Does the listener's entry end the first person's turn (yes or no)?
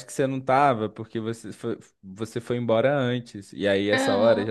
no